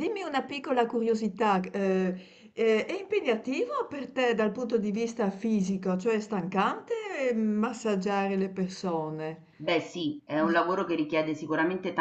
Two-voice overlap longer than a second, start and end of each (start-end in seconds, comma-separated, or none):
none